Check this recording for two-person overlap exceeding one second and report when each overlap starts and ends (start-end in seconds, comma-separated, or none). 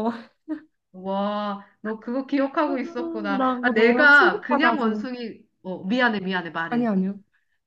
3.4-5.0